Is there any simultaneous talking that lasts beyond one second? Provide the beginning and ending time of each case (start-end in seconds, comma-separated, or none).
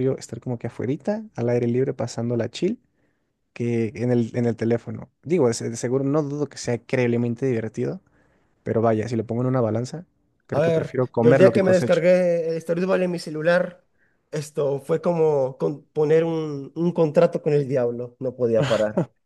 10.5-12.0